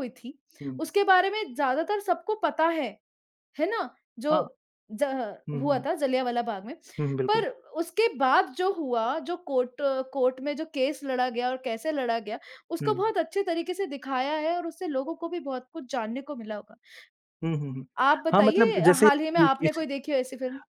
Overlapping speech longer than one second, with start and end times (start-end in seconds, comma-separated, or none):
18.3-19.8